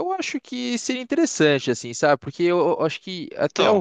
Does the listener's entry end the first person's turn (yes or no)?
no